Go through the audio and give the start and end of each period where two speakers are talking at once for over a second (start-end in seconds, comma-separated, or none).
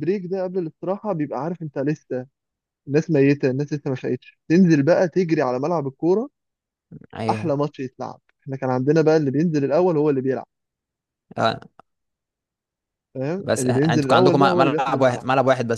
13.4-15.2